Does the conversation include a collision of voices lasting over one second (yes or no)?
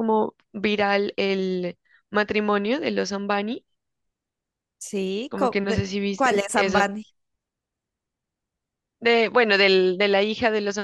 yes